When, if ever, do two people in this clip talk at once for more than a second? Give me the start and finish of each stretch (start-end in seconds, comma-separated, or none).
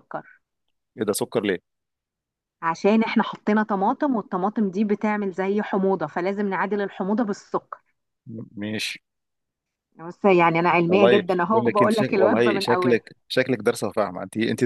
10.9-13.0